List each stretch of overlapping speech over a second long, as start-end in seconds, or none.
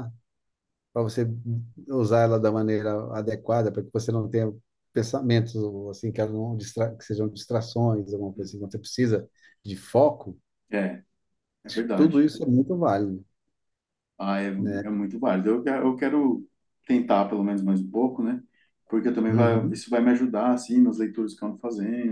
none